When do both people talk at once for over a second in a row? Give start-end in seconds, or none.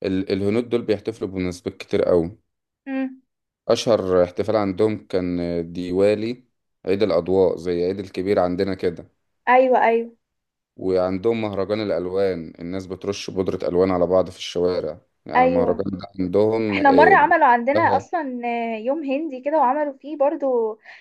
none